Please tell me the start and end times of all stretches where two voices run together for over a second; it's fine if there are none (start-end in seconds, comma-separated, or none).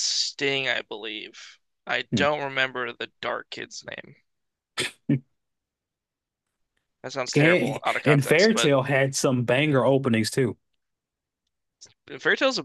7.3-8.7